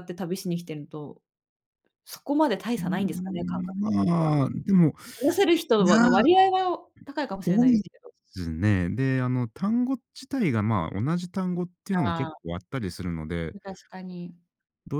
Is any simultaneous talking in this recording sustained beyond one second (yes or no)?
yes